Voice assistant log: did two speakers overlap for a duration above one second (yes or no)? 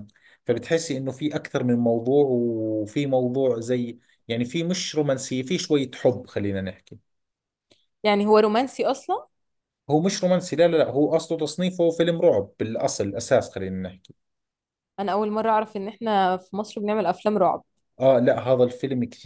no